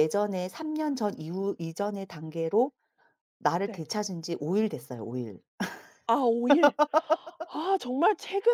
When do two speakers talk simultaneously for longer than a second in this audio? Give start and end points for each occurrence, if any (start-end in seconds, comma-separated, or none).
none